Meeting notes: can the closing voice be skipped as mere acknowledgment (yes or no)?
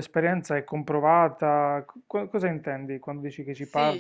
no